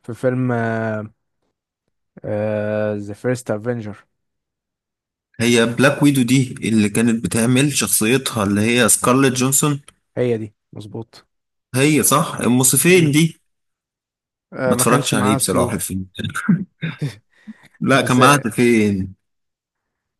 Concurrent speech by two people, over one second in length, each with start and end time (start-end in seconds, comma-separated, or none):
14.7-15.9